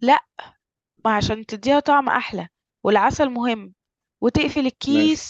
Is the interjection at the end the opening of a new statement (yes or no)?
no